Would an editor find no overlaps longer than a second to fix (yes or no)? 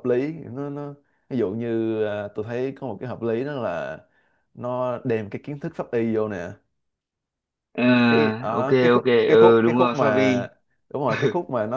no